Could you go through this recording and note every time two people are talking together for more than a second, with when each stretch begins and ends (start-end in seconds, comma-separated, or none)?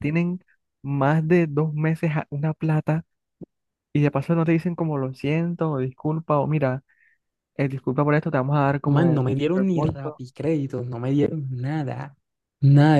8.8-10.2